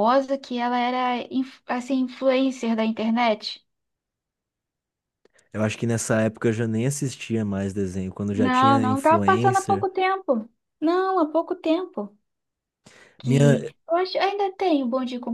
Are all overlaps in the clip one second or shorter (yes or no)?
no